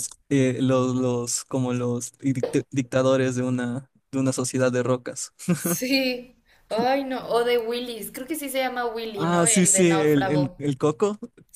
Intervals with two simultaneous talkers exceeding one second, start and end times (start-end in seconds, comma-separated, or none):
9.1-10.6